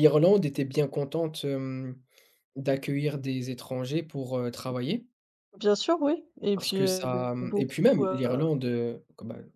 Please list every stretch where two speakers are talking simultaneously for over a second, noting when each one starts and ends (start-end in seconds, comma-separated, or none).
6.5-8.5